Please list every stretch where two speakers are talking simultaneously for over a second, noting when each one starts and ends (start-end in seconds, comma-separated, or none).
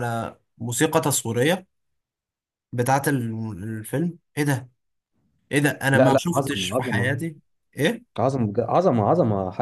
5.9-7.1